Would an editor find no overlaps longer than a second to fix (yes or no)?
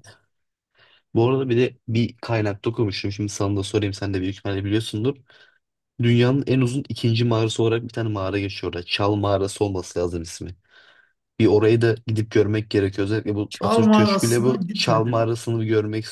no